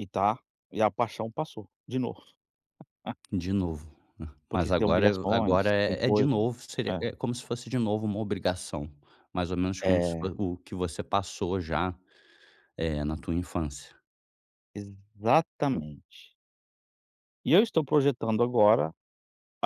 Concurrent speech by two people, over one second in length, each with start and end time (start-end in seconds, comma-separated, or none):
4.5-6.3